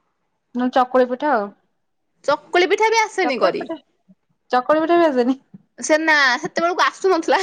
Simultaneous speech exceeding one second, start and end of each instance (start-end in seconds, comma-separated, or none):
none